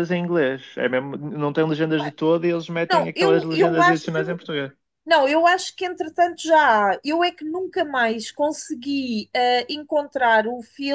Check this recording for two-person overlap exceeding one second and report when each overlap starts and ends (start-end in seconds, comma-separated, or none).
2.9-4.4